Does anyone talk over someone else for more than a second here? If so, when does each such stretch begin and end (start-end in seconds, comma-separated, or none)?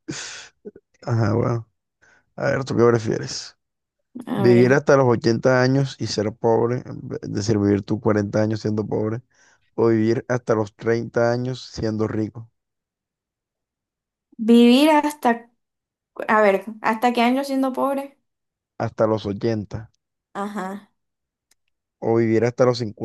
none